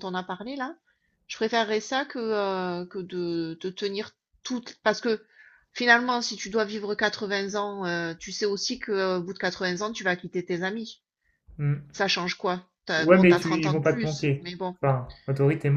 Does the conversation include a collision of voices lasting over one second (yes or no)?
yes